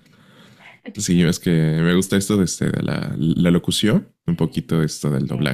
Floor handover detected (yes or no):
no